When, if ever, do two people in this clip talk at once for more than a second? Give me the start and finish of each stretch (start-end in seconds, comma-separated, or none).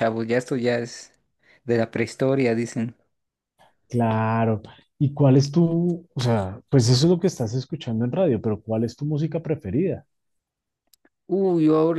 none